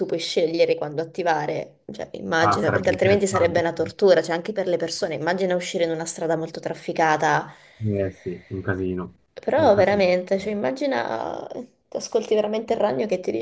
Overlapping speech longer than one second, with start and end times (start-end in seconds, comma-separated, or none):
2.4-3.6